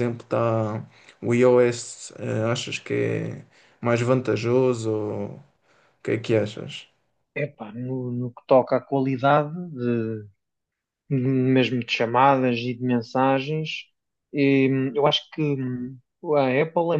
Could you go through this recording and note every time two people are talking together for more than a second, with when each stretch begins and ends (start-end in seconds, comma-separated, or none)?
none